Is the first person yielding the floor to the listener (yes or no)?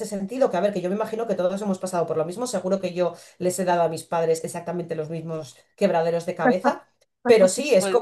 no